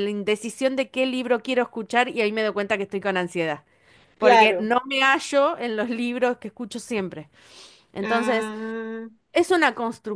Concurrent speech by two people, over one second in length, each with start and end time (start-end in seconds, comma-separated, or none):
none